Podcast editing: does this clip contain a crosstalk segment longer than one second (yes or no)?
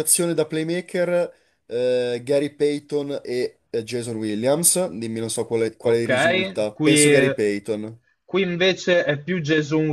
yes